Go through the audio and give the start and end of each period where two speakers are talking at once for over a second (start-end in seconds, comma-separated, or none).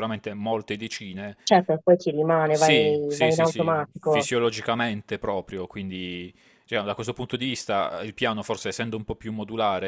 2.5-4.3